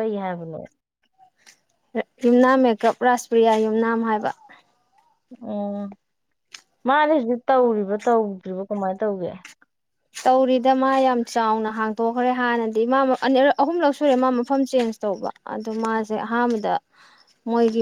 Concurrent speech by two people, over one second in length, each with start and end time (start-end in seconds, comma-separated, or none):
none